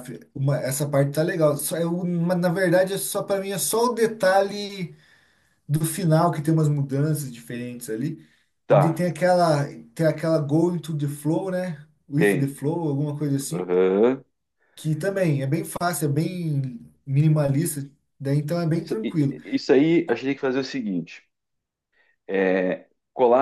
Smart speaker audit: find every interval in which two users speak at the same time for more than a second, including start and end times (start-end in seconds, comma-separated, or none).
none